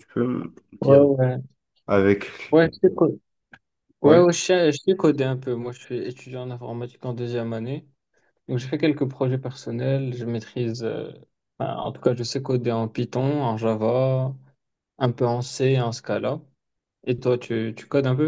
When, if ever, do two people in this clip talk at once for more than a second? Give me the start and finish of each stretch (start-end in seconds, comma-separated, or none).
none